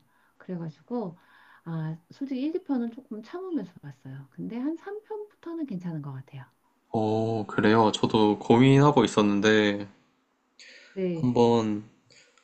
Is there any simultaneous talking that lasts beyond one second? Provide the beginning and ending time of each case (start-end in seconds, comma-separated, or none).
none